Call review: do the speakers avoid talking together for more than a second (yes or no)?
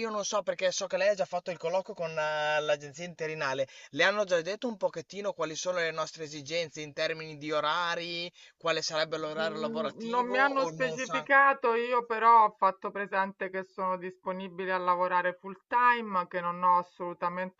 no